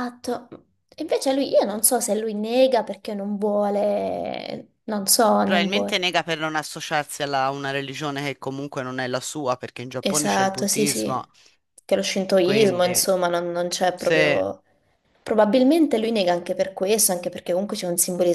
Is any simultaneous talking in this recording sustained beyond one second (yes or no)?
yes